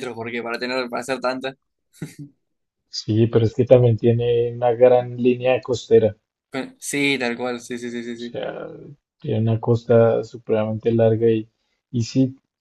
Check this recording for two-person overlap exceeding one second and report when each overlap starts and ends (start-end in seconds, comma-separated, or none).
none